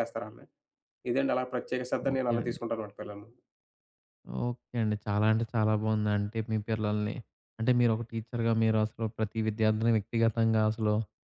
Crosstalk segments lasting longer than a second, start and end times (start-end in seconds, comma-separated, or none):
none